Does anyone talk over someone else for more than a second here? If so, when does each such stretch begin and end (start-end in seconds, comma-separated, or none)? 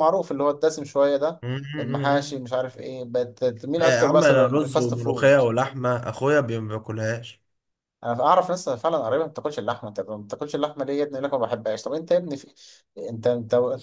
3.8-5.4